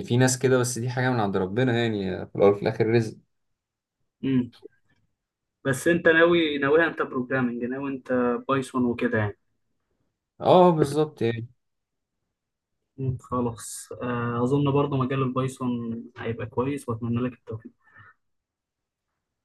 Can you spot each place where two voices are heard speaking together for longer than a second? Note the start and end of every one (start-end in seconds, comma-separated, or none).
none